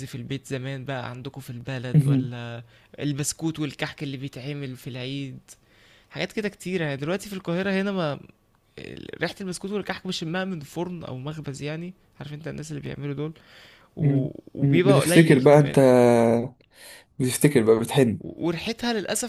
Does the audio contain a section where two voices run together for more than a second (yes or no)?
yes